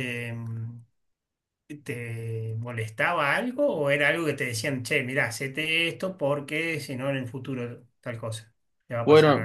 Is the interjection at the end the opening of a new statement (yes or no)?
yes